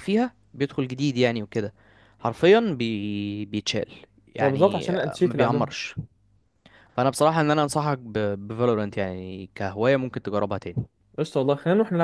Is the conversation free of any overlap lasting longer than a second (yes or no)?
no